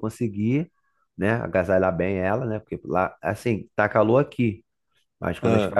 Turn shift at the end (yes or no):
no